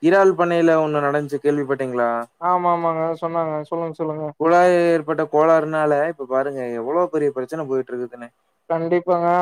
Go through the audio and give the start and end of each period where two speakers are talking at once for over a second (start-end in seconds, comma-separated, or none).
none